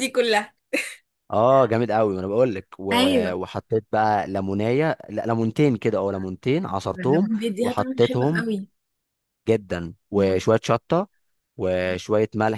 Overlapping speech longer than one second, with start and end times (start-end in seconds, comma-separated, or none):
6.8-8.4